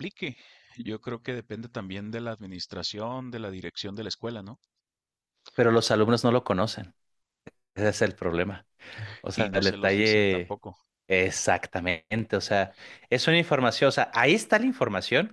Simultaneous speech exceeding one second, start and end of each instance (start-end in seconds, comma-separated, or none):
9.3-10.6